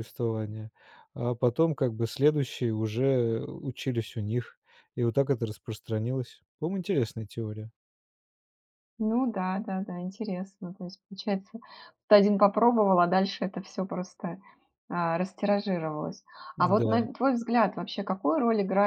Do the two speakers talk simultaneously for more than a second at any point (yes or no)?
no